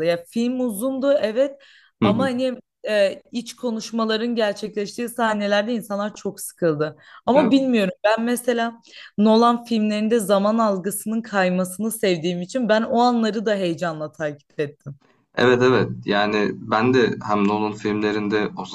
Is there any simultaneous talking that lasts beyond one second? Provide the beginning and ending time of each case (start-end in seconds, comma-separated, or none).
none